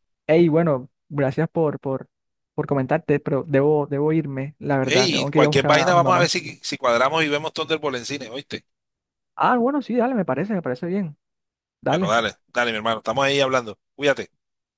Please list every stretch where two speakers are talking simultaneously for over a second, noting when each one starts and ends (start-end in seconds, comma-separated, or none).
4.8-6.2